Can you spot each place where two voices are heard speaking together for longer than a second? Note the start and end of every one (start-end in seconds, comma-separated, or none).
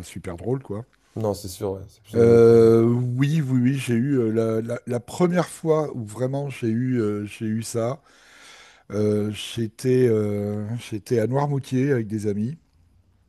none